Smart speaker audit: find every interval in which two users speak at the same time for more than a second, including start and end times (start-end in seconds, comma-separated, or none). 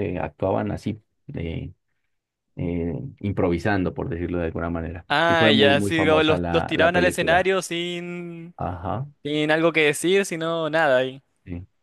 5.1-7.5